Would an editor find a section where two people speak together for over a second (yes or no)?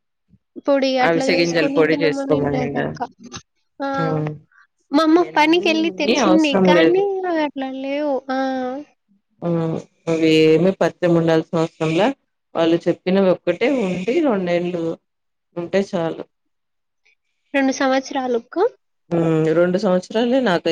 yes